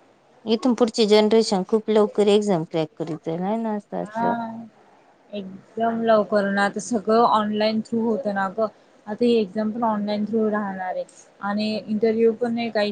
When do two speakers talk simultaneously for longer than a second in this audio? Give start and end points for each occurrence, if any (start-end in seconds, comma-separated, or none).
none